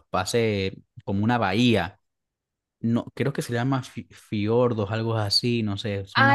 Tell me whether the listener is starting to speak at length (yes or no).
yes